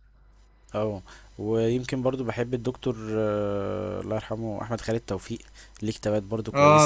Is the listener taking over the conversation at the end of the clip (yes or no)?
yes